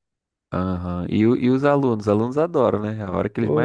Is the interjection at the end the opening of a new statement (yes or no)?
yes